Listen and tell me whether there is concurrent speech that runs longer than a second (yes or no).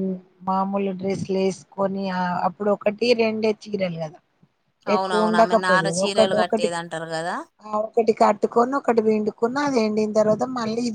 yes